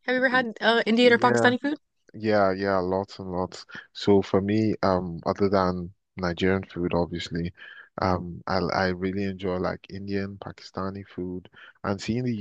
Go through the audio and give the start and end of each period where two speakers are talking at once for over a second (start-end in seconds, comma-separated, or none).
none